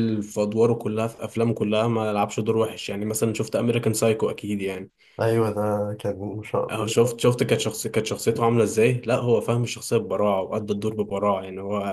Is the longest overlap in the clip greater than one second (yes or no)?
no